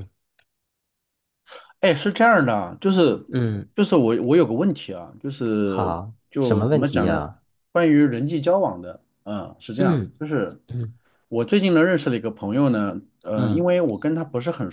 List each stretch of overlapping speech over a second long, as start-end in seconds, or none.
5.6-7.2